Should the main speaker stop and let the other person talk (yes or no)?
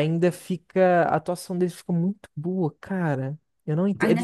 yes